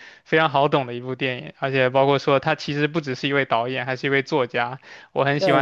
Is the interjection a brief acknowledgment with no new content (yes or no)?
yes